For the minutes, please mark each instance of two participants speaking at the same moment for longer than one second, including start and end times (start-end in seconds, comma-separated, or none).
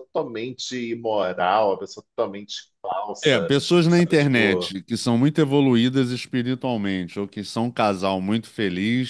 3.2-4.7